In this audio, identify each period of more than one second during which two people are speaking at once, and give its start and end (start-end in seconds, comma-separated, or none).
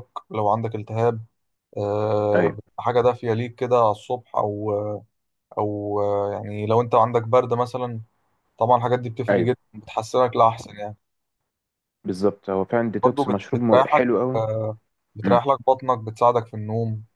13.0-14.4